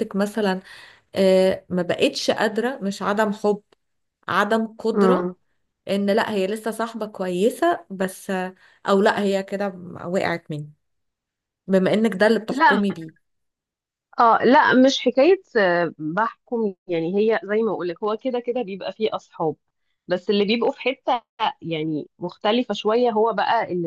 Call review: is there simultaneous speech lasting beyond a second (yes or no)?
no